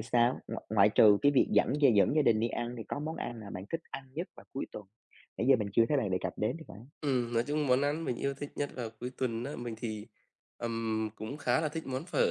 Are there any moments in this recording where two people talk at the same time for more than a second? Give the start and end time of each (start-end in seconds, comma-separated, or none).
none